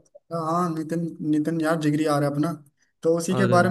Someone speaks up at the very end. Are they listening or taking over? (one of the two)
listening